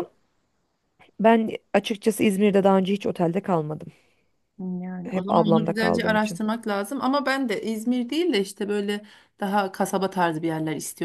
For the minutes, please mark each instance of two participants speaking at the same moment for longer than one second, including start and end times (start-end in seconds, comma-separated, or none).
5.0-6.4